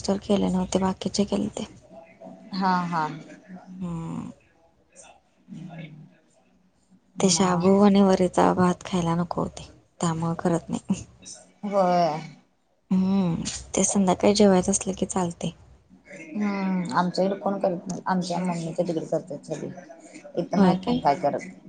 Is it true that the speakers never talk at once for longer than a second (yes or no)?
yes